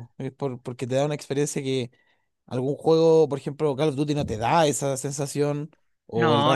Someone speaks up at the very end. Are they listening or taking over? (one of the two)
listening